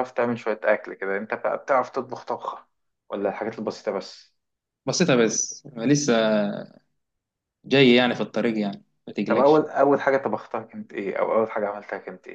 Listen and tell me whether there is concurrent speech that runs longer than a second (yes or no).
no